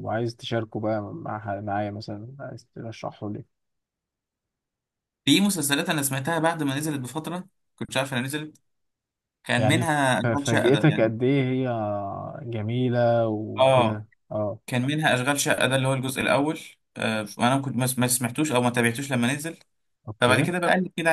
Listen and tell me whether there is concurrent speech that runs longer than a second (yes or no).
yes